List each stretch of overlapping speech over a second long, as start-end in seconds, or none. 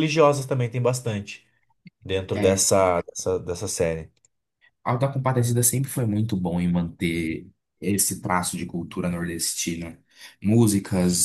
none